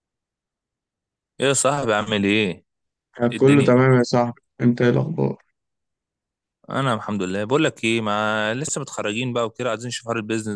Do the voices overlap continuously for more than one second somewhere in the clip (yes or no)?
no